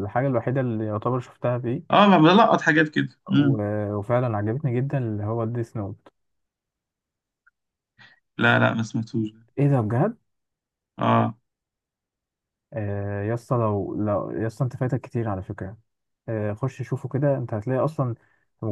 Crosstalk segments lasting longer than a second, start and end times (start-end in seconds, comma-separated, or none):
none